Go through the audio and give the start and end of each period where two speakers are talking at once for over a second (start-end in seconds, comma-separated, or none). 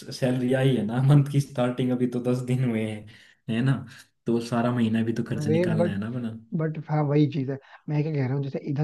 none